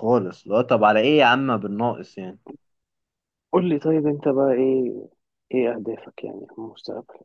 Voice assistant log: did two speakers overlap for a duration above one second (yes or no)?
no